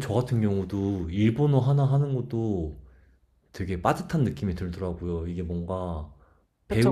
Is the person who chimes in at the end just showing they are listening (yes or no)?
yes